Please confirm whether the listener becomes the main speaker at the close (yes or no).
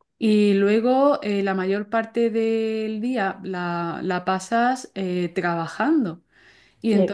no